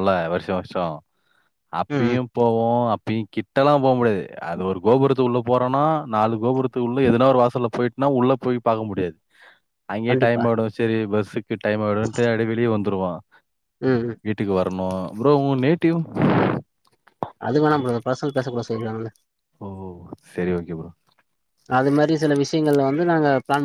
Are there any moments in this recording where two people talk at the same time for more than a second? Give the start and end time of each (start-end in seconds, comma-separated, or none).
none